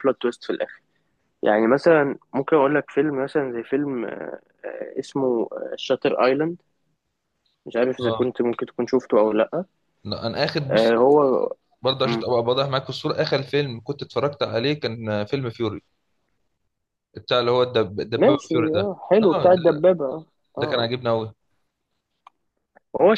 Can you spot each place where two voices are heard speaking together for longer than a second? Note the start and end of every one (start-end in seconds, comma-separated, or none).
18.2-19.9